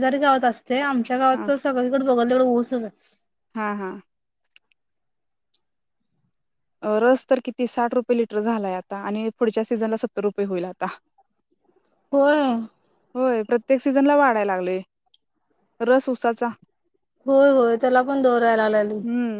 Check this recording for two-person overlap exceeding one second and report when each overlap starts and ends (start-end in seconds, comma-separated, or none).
none